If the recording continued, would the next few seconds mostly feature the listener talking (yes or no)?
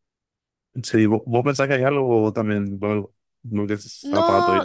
yes